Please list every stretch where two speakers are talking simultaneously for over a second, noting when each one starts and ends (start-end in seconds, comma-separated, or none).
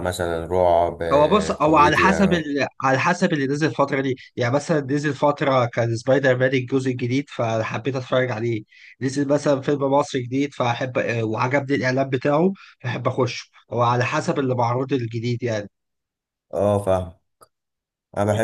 1.1-2.4